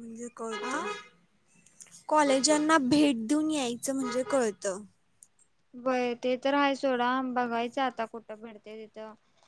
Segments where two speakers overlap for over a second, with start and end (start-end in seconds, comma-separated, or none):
none